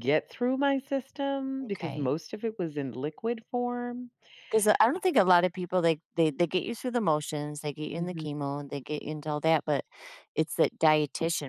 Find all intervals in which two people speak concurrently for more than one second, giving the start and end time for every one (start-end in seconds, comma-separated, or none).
none